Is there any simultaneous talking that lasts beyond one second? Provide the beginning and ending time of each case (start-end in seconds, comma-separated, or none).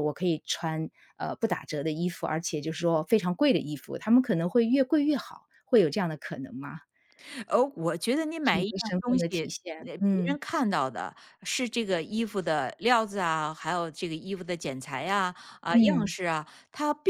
8.4-10.4